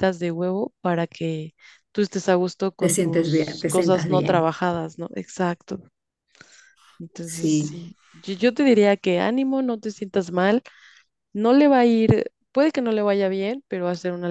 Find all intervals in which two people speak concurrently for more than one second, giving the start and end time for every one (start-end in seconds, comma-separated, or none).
2.8-4.6